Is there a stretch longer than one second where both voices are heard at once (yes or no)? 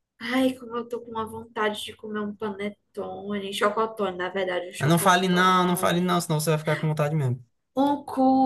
yes